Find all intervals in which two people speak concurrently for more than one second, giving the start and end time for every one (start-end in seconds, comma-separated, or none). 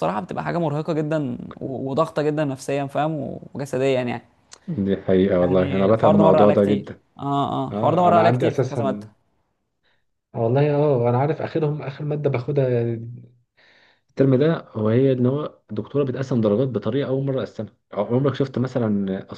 5.4-7.0, 7.7-9.1